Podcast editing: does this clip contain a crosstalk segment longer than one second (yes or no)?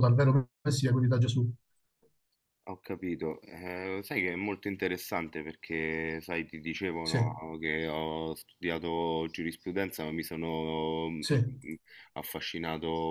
no